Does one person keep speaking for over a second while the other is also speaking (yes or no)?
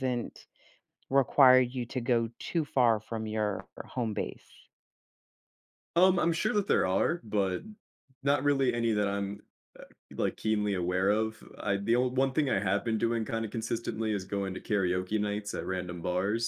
no